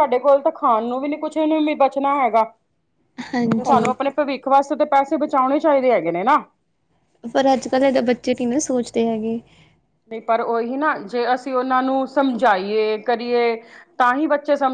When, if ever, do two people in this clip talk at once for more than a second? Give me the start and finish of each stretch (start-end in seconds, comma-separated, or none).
none